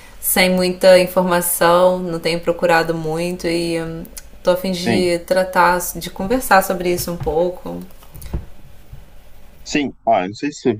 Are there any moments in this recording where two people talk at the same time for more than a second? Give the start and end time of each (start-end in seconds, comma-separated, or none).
none